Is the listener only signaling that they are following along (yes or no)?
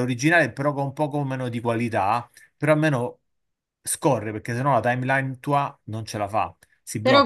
no